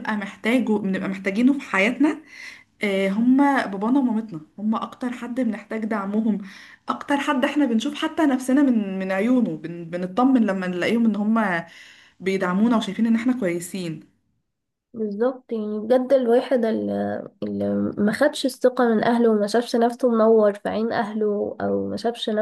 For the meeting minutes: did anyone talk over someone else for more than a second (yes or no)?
no